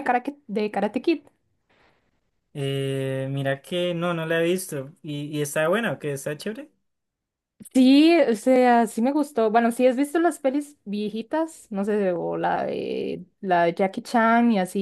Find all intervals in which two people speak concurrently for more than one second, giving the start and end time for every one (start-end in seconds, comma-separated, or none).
none